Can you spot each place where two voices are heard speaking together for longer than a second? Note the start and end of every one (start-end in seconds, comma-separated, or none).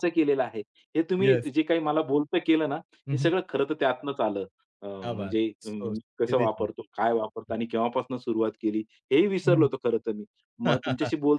5.0-6.7